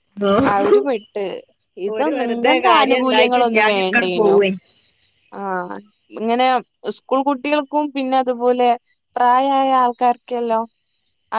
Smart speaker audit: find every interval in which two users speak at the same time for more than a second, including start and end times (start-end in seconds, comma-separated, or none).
1.9-4.4